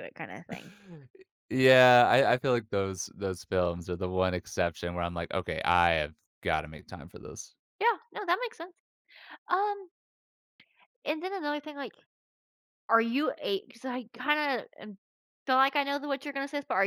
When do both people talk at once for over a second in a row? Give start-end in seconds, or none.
none